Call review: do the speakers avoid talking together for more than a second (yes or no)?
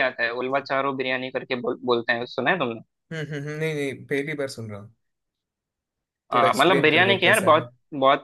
no